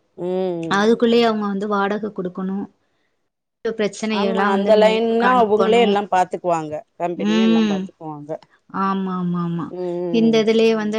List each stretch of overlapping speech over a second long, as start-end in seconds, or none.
4.2-5.8